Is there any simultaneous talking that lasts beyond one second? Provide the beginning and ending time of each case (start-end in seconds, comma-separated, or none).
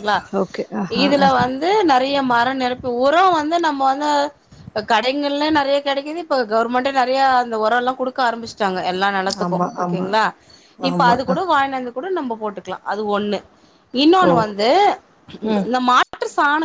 none